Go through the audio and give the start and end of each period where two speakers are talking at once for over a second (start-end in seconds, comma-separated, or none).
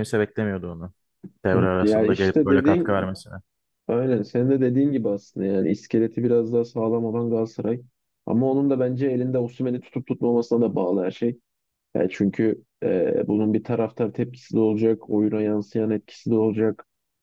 1.5-3.1